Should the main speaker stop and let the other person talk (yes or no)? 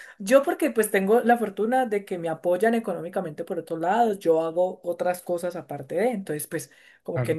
no